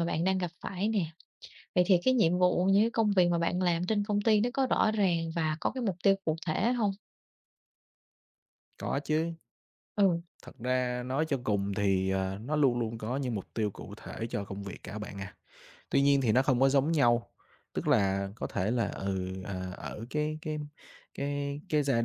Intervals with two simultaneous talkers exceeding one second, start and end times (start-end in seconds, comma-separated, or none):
none